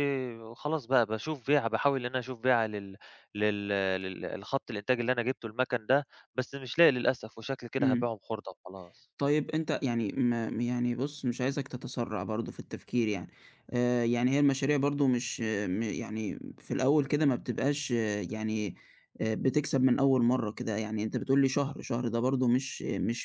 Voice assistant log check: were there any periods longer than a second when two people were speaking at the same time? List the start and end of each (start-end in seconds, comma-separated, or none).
none